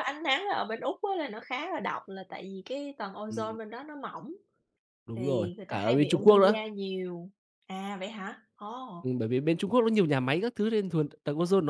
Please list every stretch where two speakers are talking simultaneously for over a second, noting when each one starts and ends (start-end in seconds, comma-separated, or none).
5.2-6.6